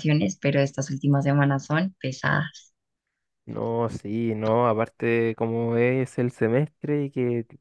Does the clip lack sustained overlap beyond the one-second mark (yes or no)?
yes